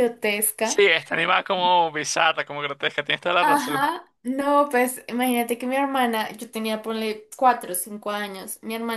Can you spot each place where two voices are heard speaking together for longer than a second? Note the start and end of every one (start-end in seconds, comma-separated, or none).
none